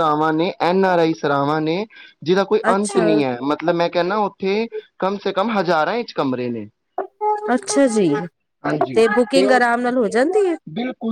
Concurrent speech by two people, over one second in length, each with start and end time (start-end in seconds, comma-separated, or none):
none